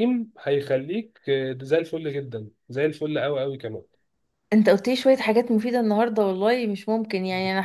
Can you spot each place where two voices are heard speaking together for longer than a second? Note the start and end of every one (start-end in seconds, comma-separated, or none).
none